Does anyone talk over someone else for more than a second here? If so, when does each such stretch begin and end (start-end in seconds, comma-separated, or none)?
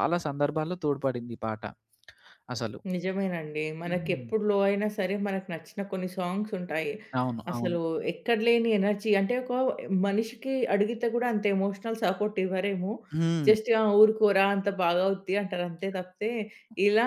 none